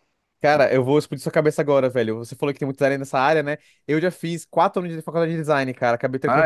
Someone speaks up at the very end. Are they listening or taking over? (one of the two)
listening